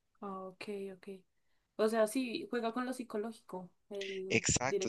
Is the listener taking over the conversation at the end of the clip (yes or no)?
yes